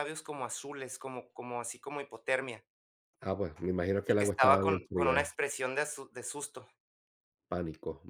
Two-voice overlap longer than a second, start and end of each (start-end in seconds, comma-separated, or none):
4.1-5.3